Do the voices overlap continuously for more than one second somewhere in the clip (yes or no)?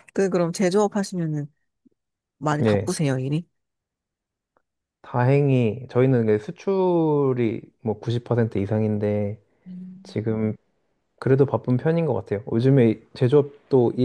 no